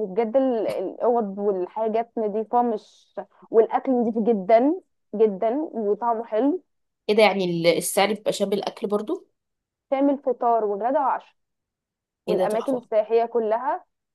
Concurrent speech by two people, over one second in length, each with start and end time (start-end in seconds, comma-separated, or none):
none